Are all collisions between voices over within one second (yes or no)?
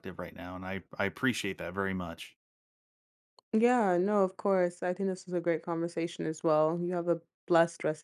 yes